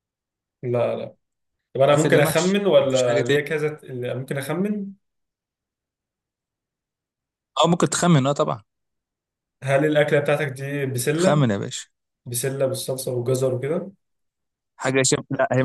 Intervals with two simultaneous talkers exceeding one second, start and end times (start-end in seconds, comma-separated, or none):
1.9-3.4